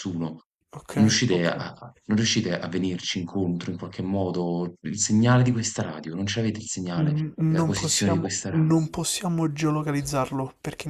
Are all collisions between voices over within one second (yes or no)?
no